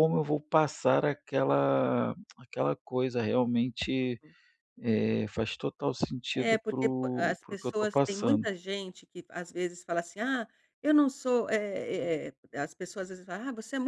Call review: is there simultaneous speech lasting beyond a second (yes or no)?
yes